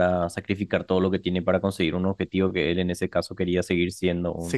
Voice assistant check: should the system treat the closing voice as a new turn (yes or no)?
yes